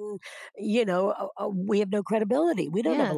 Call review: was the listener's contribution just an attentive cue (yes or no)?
no